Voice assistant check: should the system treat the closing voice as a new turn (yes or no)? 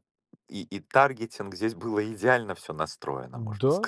yes